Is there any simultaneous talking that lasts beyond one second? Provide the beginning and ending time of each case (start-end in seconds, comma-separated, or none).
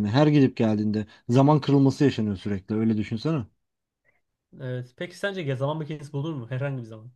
none